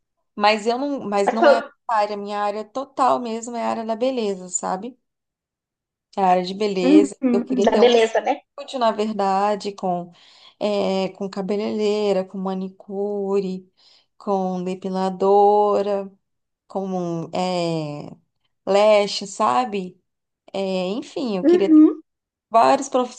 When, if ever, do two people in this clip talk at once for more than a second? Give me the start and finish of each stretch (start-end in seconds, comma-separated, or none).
6.8-8.4